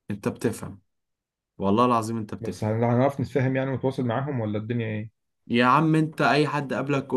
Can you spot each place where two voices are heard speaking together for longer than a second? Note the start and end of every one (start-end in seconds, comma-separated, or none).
none